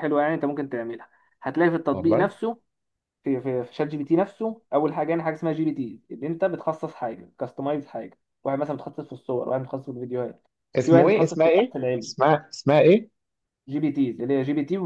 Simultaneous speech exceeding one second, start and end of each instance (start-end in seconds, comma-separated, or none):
10.8-12.1